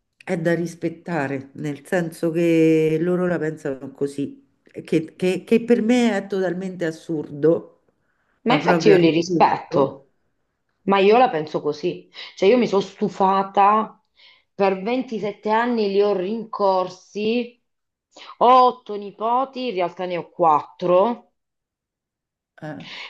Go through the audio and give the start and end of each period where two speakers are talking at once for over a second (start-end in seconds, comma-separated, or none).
8.5-9.9